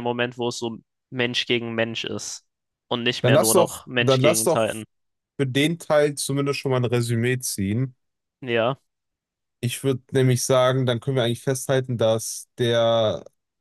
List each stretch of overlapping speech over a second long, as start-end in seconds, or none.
3.2-4.7